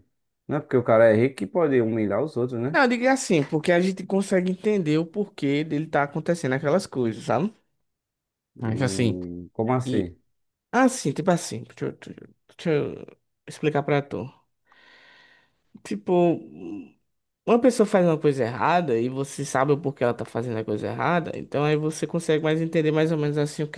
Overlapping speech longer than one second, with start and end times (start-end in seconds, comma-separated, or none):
none